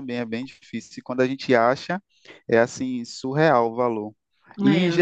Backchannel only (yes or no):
yes